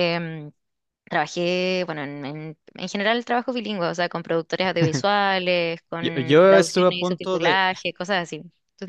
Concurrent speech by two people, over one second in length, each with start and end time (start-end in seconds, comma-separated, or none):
6.0-7.6